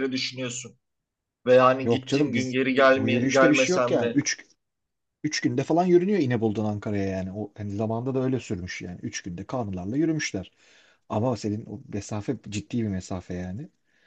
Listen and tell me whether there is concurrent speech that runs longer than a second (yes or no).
yes